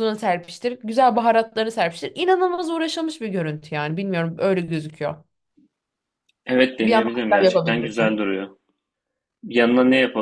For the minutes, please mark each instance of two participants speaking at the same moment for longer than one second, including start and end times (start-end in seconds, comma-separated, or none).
6.8-8.2